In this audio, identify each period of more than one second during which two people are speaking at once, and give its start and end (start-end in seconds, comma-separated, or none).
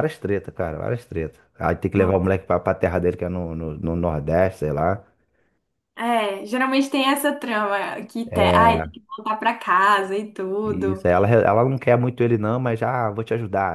none